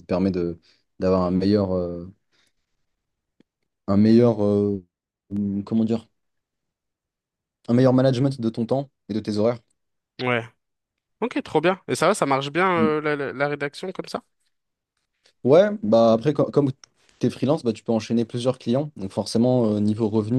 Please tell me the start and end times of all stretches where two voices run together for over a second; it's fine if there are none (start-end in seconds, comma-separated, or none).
none